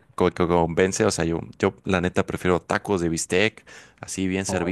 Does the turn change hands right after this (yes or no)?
no